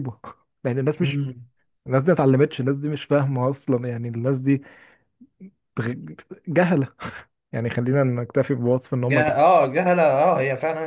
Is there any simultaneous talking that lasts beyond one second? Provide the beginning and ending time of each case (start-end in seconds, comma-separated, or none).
none